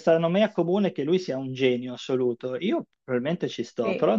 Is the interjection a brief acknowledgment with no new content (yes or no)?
yes